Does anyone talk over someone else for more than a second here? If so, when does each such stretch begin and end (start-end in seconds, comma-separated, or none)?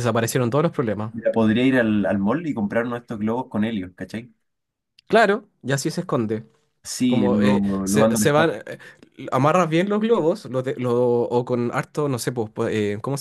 7.1-8.5